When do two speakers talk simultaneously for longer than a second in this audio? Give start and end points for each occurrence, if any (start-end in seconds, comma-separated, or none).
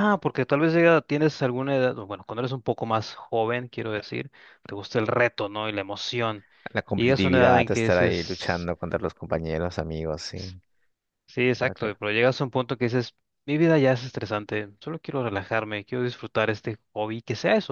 7.0-8.6